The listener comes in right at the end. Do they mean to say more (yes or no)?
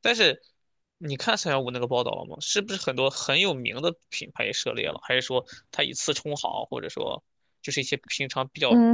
yes